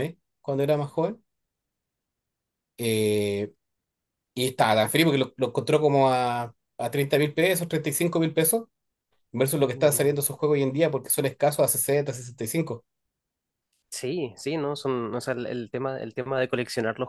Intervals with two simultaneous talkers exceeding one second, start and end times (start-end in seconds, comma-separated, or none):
none